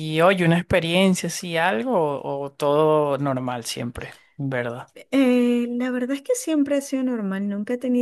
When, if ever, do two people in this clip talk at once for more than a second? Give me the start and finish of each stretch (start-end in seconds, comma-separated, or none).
none